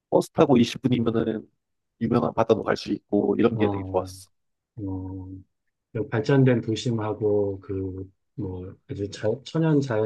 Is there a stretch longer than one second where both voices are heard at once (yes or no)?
no